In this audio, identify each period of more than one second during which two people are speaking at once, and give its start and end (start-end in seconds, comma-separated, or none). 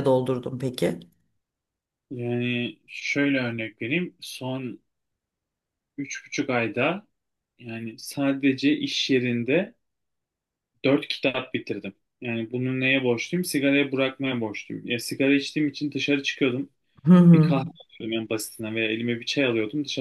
none